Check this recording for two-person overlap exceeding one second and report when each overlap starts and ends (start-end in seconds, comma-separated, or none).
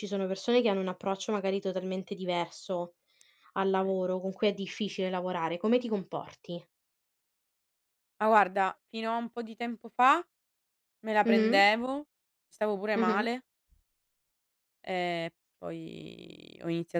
none